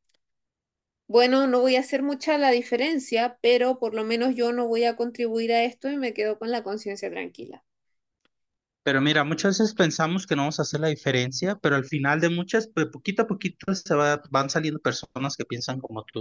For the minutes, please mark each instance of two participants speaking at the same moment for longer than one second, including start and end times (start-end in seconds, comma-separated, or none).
none